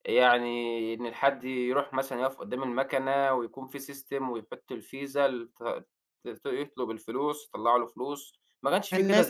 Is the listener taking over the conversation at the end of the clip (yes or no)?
yes